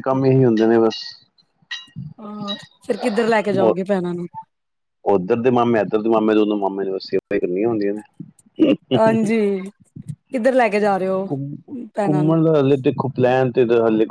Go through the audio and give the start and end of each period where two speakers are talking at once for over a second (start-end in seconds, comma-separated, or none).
none